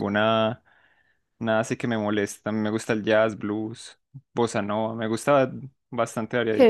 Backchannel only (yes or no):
no